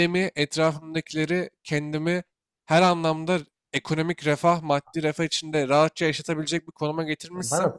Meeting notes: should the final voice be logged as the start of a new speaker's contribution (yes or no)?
yes